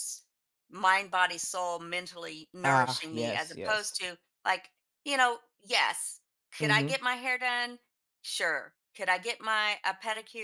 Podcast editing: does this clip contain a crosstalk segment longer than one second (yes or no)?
yes